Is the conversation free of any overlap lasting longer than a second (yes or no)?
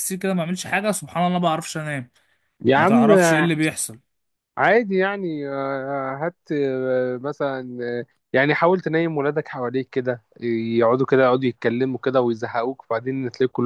yes